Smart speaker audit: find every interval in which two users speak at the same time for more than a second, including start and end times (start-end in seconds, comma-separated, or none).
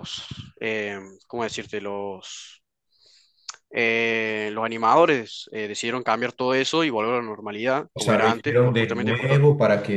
7.9-9.4